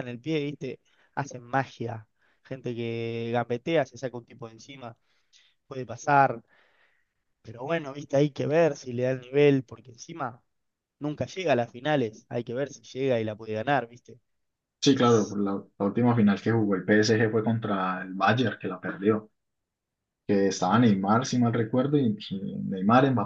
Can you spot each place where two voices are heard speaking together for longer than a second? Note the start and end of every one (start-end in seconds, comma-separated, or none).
none